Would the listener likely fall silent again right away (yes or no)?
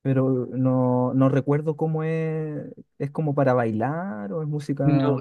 no